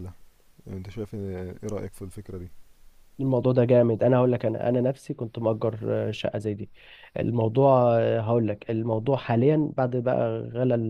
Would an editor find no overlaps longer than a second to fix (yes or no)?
yes